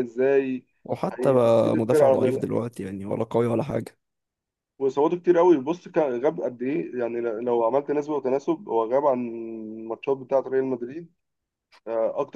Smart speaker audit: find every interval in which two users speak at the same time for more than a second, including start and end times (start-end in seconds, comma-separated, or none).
1.1-2.4